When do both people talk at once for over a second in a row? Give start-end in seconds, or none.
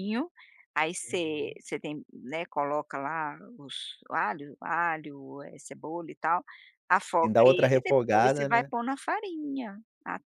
7.2-8.7